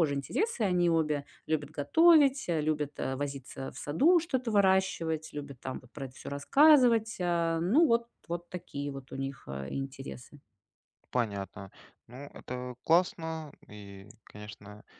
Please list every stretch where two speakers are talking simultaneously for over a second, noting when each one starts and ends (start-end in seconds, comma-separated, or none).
none